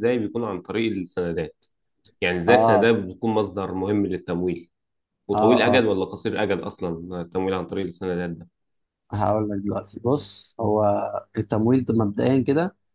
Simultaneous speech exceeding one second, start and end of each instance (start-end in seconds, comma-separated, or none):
none